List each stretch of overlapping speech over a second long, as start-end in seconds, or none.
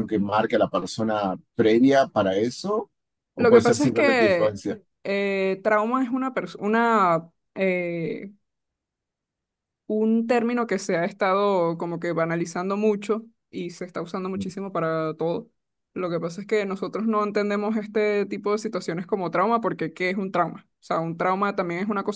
3.4-4.6